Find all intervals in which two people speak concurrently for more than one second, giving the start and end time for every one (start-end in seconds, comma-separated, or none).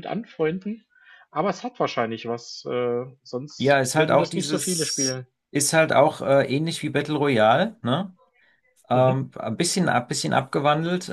3.6-5.3